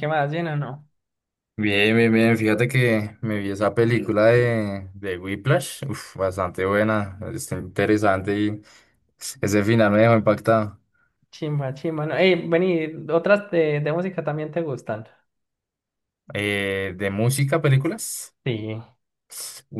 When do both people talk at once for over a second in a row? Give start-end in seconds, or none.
none